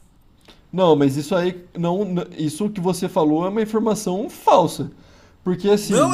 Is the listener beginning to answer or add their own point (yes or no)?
yes